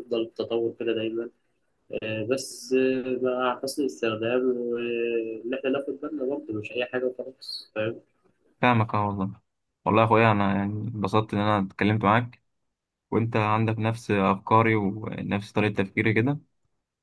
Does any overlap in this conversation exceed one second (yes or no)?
no